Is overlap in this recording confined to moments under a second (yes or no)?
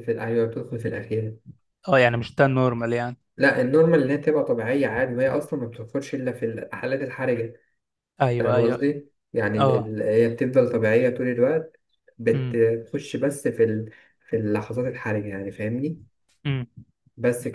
yes